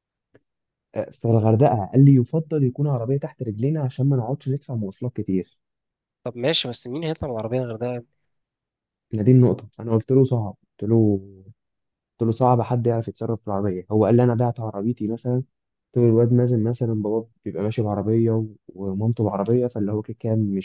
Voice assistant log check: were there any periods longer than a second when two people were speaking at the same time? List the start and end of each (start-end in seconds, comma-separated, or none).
none